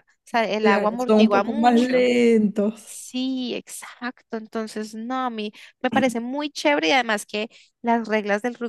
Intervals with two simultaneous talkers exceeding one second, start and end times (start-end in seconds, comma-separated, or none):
0.6-2.0